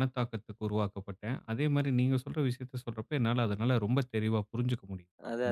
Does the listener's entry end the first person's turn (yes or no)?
yes